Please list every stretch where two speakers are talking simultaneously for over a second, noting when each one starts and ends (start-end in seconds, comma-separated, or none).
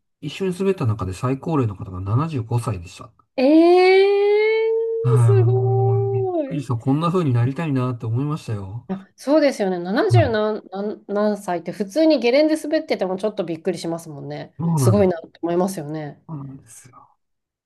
5.1-6.6